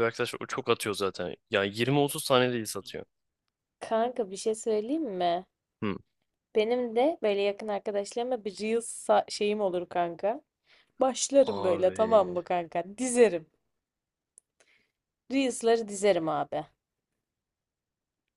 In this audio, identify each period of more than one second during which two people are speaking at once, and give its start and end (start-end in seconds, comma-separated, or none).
none